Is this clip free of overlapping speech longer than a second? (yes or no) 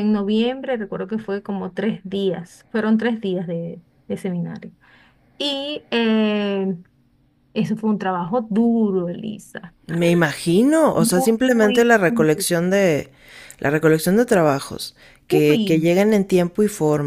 no